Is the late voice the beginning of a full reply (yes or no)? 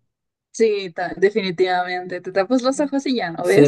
yes